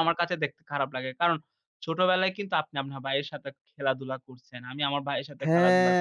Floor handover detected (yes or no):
yes